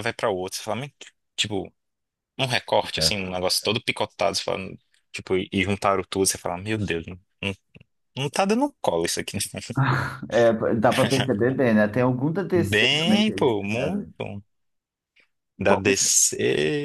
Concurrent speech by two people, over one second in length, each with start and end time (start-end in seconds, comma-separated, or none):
12.5-14.1